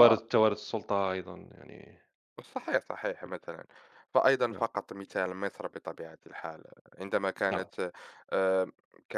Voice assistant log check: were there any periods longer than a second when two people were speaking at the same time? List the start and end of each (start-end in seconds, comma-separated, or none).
none